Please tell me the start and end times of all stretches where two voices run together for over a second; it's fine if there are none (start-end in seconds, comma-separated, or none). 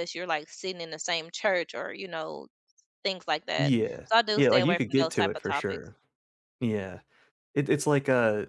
3.6-5.9